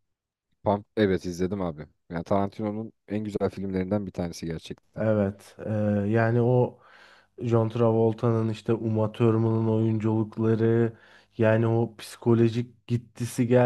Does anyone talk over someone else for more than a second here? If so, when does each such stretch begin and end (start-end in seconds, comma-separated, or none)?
none